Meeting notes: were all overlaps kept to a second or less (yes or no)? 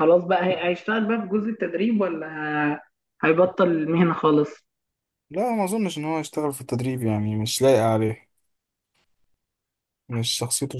yes